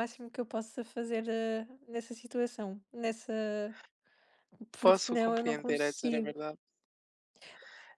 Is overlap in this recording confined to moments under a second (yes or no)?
no